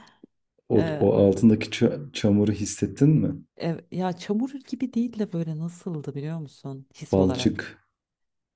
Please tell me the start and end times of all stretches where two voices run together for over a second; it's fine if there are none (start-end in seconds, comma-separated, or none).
none